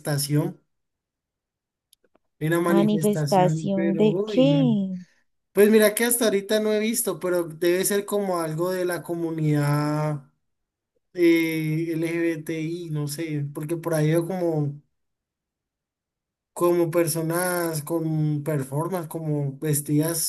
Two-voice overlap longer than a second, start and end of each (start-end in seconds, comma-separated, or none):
2.7-4.8